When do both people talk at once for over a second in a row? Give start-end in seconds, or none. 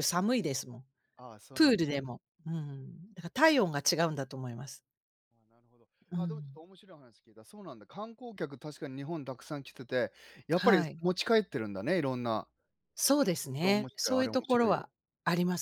13.6-14.8